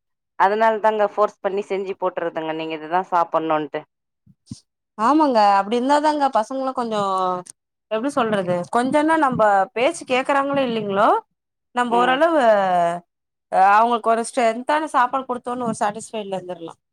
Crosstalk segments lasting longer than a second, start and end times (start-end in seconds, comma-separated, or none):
none